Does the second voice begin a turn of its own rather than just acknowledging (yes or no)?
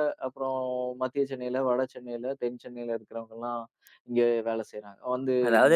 yes